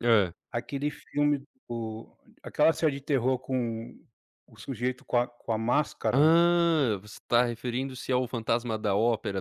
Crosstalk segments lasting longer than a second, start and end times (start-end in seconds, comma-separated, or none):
none